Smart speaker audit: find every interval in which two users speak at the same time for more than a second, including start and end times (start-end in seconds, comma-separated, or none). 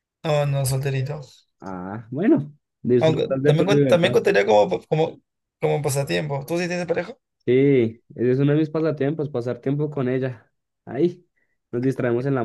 3.0-4.2